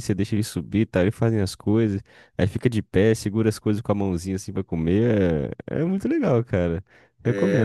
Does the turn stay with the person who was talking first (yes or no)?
no